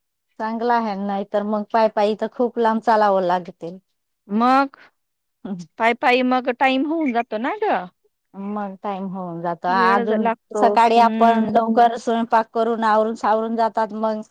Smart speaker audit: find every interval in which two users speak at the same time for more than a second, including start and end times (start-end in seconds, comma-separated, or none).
9.8-11.5